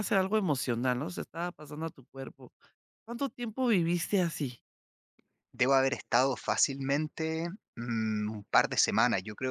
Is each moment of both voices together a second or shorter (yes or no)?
yes